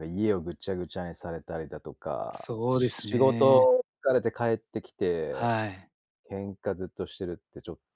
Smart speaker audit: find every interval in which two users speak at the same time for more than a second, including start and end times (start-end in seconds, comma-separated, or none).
2.3-3.7